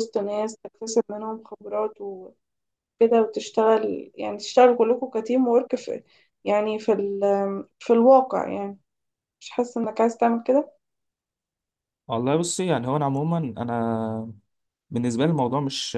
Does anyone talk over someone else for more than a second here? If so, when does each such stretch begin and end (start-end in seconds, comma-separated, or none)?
none